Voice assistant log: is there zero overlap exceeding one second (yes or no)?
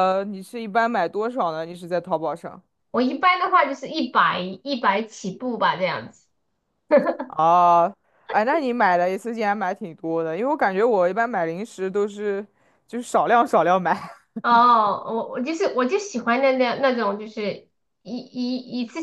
yes